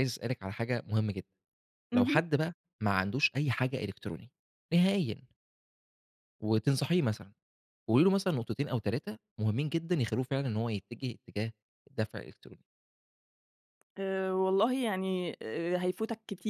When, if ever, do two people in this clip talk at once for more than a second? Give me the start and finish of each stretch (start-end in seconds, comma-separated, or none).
none